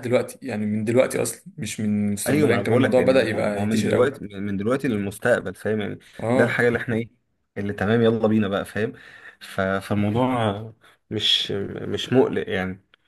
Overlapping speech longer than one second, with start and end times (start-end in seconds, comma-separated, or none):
2.3-4.2